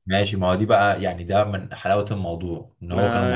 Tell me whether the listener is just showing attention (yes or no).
yes